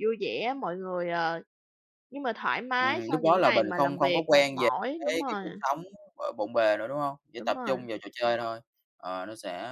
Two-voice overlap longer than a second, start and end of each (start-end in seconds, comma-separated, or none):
2.8-5.4